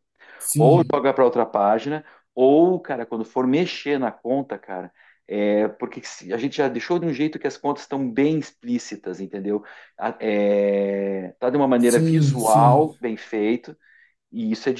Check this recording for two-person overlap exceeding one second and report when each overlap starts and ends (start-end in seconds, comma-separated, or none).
11.8-13.0